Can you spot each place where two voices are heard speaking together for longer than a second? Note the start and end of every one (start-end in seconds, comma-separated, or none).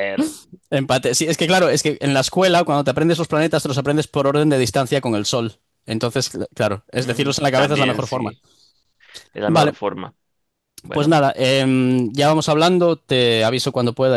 7.0-8.3